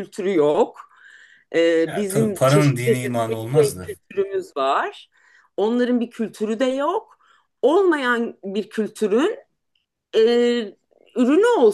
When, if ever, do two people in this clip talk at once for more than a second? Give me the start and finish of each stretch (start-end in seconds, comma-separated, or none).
1.9-3.9